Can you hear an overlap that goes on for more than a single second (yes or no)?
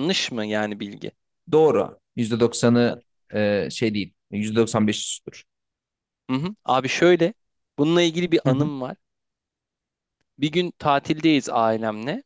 no